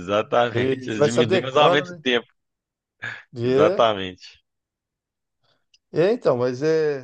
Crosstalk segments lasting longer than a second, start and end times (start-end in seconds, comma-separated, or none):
0.5-2.0